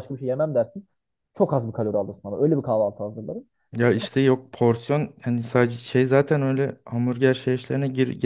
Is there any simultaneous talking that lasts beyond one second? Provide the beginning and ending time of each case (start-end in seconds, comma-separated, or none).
none